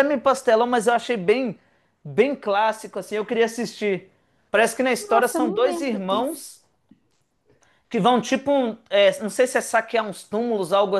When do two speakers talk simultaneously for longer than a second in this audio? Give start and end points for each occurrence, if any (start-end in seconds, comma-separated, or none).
5.0-6.5